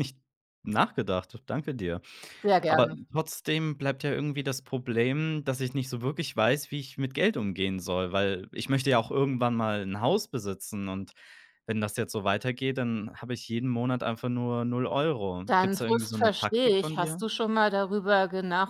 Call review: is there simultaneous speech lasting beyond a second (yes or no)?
yes